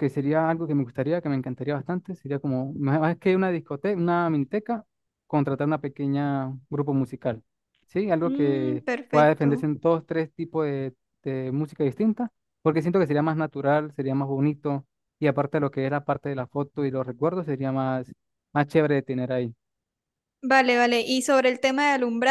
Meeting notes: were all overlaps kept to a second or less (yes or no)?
no